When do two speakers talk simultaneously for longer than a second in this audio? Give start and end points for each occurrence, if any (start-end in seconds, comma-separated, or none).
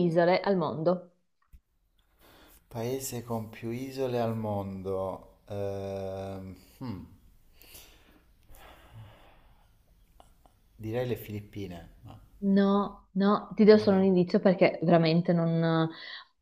none